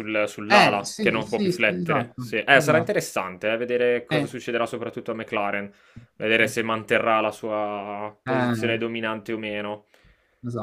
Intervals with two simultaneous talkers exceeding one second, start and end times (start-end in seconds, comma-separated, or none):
0.5-3.0